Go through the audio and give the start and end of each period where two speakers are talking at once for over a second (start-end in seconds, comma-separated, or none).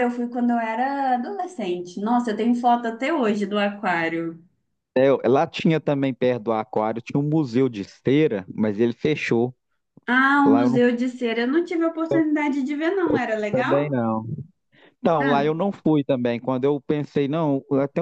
none